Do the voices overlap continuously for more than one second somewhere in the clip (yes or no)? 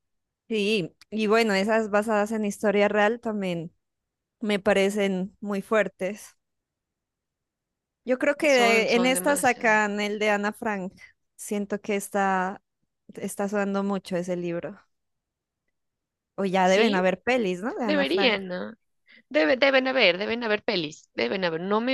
yes